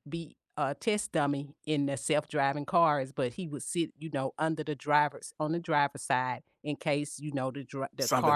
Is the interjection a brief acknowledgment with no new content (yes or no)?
no